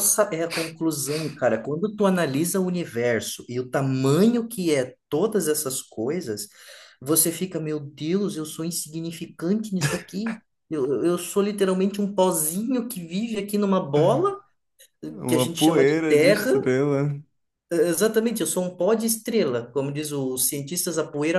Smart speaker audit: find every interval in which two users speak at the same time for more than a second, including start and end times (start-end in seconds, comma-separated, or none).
15.3-16.5